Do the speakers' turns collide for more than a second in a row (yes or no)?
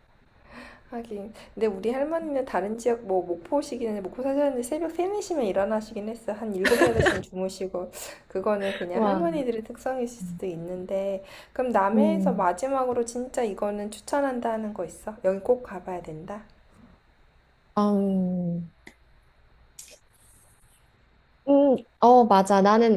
no